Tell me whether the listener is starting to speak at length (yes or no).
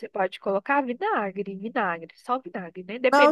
no